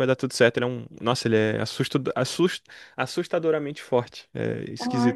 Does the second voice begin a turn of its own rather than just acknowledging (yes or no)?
yes